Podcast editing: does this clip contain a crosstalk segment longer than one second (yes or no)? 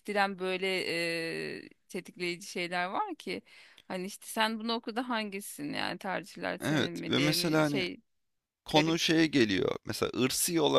yes